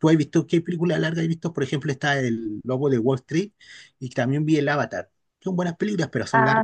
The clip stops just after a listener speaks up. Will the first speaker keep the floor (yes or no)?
no